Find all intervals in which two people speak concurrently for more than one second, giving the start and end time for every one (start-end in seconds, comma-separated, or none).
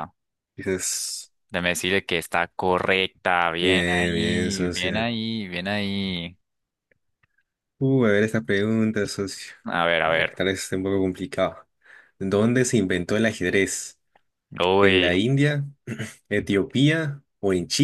3.6-5.1